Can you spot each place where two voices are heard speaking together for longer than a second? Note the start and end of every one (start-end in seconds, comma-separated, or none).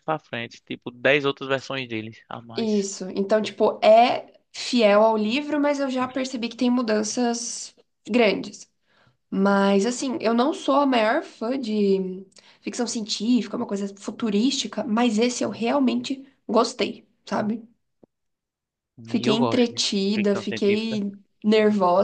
19.2-21.0